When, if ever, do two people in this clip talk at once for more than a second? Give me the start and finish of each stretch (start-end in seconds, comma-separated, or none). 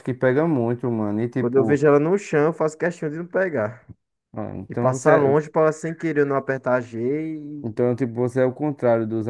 none